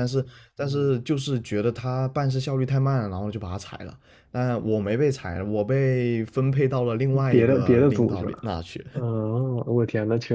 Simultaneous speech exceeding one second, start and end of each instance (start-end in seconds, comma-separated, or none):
7.1-8.5